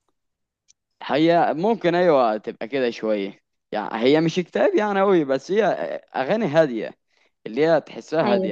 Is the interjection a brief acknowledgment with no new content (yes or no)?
yes